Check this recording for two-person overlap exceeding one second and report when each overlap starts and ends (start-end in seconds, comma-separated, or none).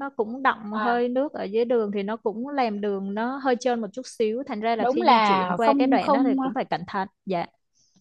4.8-6.3